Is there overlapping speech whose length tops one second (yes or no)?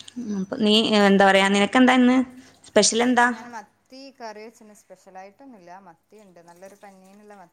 no